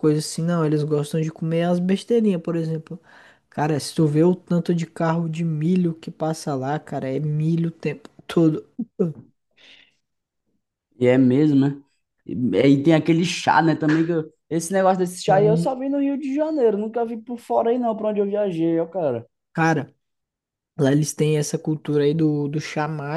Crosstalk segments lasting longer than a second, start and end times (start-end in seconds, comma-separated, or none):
none